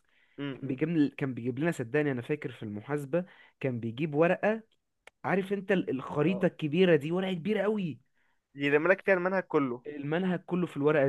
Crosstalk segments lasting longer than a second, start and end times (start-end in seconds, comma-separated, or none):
none